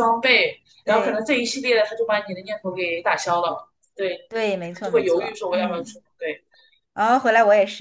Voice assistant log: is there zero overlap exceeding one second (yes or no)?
no